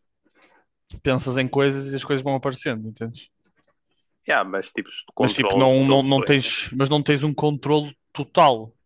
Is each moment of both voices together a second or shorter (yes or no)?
no